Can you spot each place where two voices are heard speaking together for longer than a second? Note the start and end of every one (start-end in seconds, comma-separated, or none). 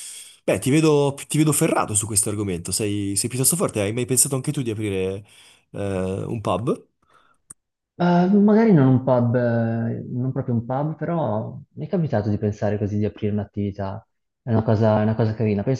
none